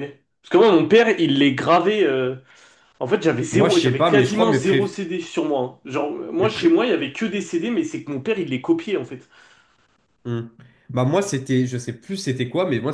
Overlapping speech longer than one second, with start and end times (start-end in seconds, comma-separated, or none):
3.5-5.0